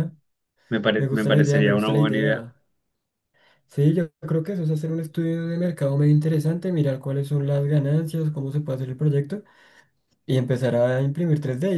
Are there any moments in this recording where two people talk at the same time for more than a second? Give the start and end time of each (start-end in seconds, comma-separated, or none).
1.0-2.4